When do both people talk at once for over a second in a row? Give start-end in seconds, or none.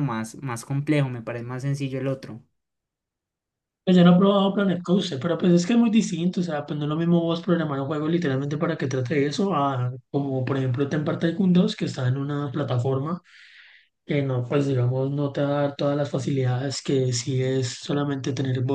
none